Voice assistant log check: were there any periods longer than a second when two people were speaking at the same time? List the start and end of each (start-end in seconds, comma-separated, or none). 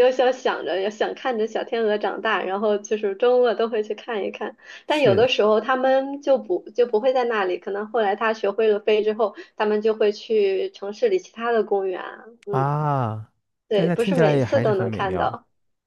13.7-15.4